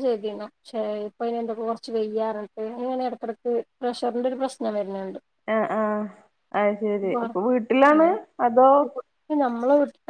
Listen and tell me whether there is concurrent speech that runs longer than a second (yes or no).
no